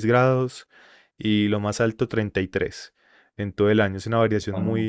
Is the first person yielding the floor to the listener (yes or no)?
no